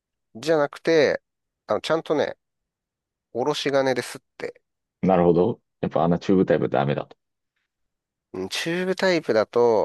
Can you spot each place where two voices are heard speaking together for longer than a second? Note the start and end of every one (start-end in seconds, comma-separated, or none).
none